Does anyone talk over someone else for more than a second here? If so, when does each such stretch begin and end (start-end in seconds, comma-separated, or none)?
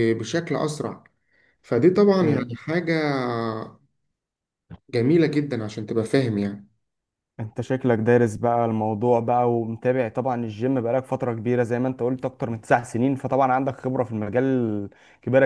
none